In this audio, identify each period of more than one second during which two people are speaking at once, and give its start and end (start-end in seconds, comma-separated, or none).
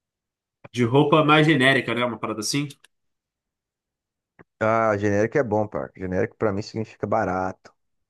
none